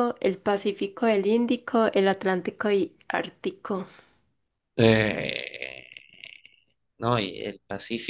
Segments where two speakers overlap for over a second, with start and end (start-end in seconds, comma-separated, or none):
none